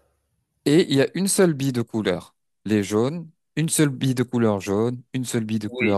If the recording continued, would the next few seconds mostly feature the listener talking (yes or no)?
no